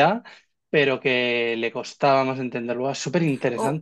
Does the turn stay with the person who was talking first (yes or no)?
no